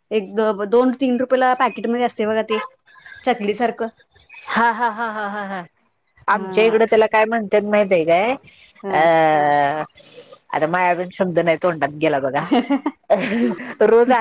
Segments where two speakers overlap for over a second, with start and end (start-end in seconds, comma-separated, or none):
none